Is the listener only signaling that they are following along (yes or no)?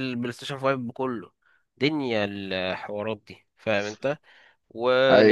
yes